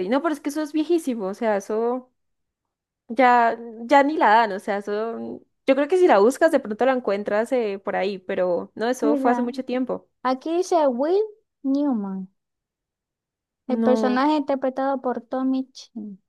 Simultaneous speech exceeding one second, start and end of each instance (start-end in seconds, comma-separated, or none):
none